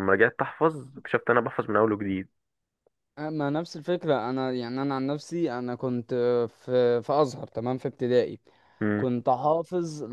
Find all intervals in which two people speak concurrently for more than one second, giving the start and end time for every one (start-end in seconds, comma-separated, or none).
none